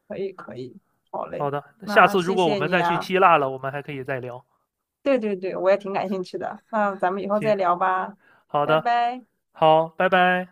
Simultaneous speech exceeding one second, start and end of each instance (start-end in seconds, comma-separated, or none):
1.3-3.1